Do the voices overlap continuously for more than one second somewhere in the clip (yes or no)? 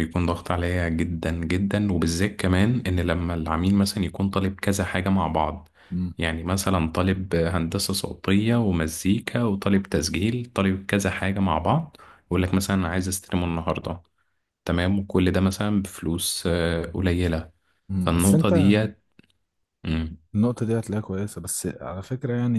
no